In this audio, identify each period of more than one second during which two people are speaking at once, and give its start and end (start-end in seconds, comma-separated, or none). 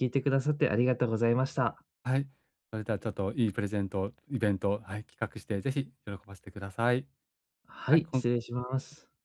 none